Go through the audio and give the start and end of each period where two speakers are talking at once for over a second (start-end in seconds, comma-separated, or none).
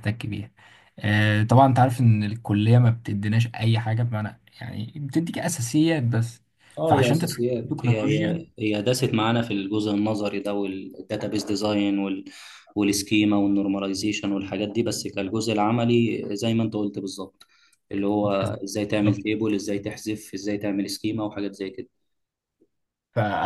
6.8-8.5